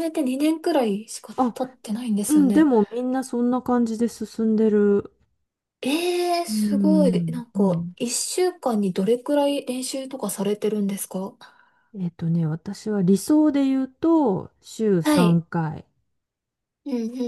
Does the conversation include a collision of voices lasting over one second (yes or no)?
yes